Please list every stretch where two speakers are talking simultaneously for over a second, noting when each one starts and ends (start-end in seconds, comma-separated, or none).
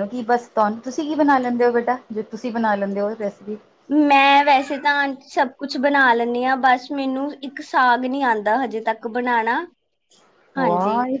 none